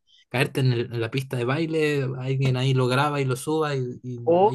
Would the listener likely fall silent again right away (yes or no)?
no